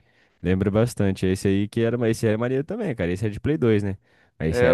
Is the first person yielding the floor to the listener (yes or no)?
no